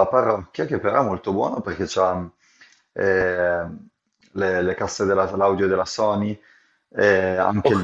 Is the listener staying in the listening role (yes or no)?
yes